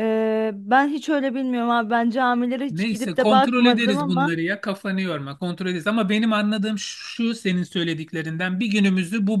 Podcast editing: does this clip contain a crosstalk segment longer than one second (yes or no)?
yes